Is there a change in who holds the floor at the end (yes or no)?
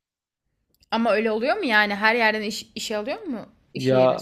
yes